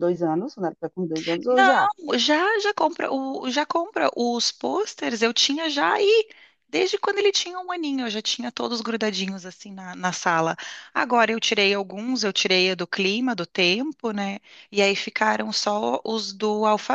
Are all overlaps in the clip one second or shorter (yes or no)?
yes